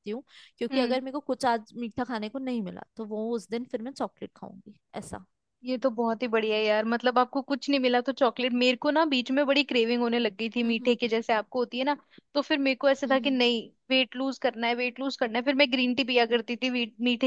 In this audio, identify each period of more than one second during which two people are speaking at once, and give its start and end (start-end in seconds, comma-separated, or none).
none